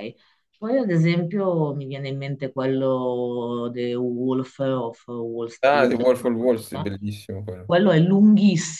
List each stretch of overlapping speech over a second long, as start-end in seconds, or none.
5.6-6.9